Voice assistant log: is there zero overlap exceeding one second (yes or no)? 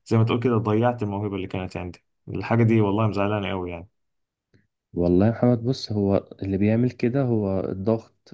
yes